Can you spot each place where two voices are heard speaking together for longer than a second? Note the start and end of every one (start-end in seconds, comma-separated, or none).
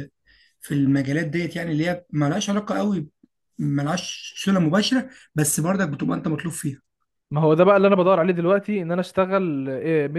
none